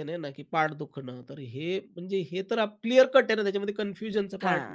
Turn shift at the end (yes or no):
yes